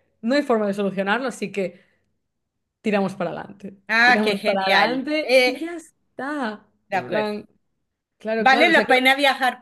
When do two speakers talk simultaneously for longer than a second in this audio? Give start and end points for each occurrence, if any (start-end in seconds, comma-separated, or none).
3.9-5.6